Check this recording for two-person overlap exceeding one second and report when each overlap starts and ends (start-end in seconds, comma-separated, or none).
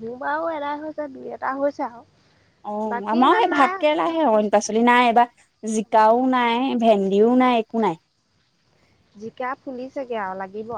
2.9-4.5